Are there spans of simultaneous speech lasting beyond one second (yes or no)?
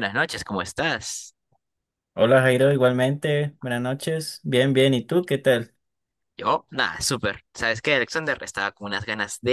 no